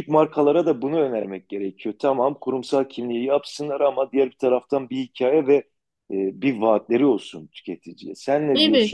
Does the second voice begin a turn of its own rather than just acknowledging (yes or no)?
yes